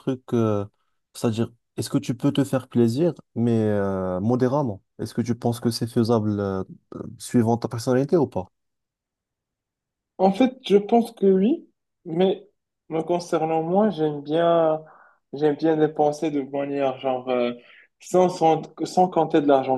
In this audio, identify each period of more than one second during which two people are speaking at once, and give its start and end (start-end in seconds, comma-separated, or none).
none